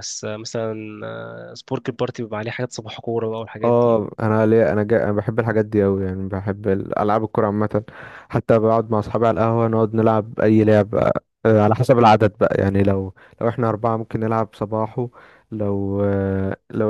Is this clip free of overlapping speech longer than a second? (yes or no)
yes